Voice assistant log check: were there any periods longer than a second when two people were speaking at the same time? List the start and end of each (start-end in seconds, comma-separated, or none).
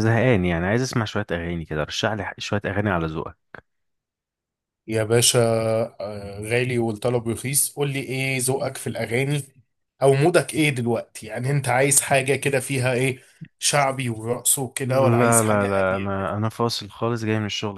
14.8-16.1